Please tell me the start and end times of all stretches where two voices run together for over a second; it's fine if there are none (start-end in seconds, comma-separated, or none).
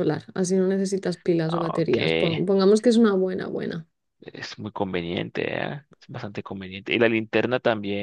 none